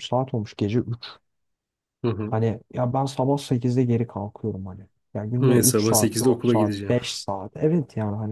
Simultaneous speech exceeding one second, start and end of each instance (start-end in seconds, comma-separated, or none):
5.4-7.0